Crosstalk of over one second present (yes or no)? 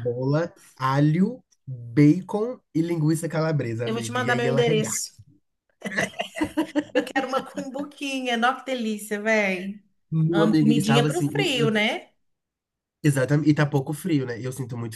yes